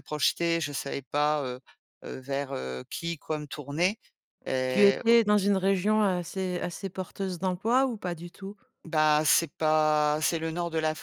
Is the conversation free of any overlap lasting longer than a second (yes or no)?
yes